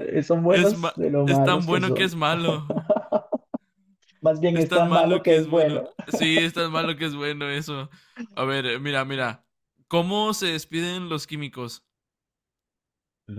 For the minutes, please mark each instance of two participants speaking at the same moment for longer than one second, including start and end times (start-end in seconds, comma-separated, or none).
0.5-2.1, 4.5-5.9